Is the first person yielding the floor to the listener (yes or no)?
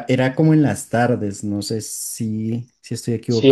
yes